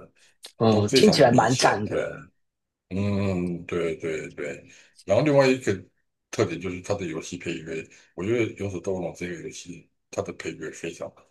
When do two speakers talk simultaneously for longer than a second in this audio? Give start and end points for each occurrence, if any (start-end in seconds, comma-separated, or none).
0.7-2.2